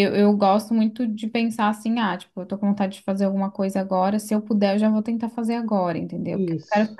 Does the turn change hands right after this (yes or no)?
no